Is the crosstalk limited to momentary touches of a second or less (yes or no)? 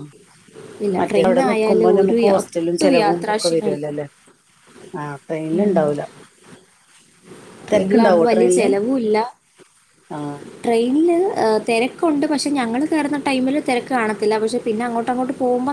no